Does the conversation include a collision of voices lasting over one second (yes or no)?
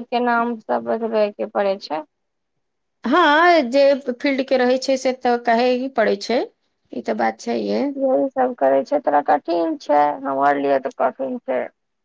no